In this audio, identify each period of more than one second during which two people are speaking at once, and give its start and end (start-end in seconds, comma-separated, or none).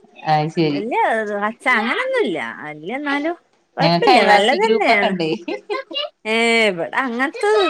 3.8-5.1